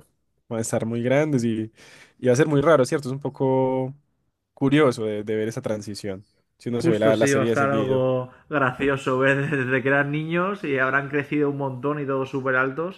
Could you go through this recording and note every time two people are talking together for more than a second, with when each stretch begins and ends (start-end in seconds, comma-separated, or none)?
6.8-8.0